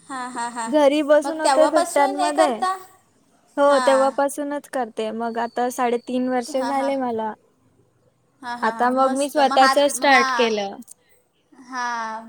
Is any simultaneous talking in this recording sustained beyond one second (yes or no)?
yes